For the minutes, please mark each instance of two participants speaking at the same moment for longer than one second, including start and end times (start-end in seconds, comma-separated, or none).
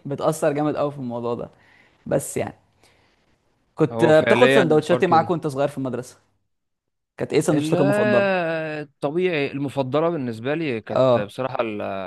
3.9-5.3